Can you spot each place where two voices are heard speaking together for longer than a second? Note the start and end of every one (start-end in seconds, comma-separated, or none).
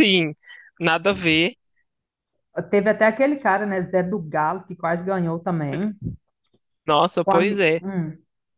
none